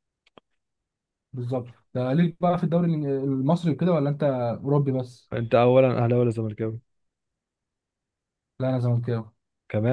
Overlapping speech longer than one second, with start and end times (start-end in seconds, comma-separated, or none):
none